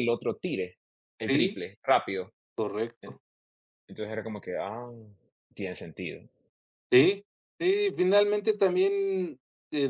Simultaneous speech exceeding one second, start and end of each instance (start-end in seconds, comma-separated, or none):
none